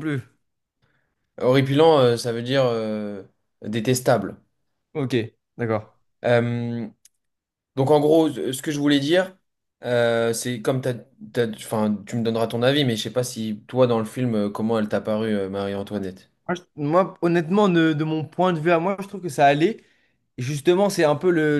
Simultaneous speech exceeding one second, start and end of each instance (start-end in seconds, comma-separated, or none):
none